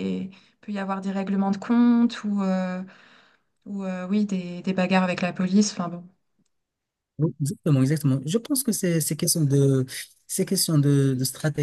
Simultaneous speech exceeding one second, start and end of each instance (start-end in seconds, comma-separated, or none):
none